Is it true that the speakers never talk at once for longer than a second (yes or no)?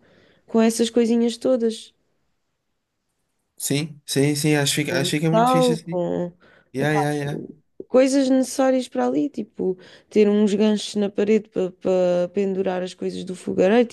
no